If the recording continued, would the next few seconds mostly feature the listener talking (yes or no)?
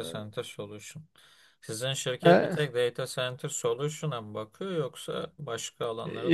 yes